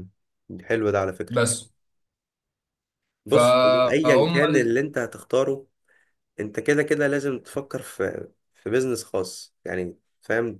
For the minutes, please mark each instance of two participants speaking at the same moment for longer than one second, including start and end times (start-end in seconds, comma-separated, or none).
3.3-4.8